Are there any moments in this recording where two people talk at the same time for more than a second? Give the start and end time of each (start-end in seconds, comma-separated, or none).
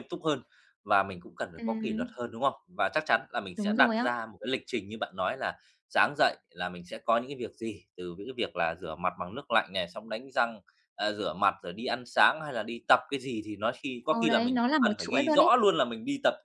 14.1-15.5